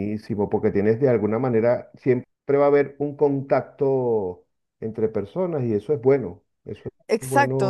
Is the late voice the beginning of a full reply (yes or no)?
yes